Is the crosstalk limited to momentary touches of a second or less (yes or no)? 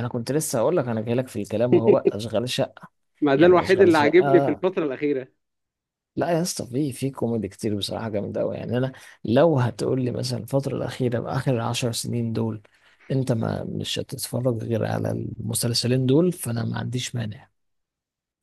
no